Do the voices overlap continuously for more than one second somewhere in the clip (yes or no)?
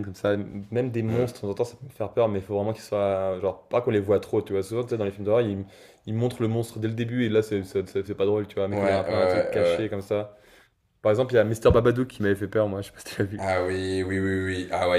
yes